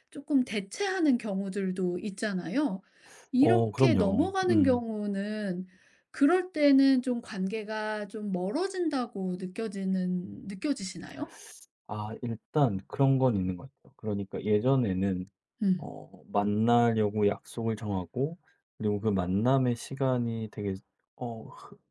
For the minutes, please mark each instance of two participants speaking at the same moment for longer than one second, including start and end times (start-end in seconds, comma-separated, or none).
3.4-4.8